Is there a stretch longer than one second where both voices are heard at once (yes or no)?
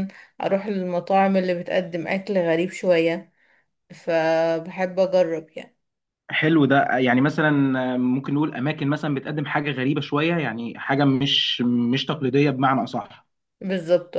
no